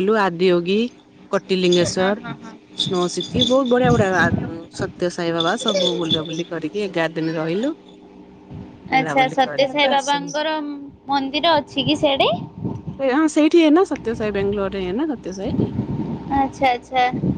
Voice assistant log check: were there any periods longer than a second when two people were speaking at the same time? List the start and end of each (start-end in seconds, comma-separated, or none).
9.0-10.3